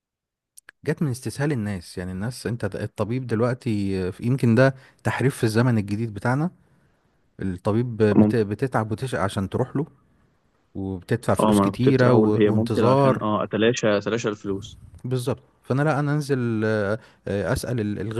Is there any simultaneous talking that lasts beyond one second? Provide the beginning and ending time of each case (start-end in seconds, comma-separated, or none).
11.4-13.2